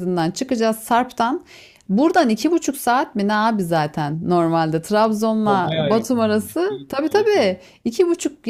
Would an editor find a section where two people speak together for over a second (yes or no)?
yes